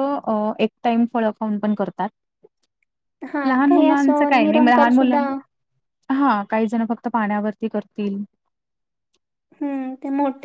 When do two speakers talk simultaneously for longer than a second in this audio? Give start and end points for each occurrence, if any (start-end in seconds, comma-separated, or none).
3.5-5.2